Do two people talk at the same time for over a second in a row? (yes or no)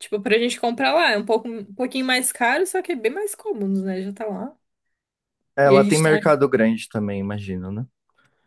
no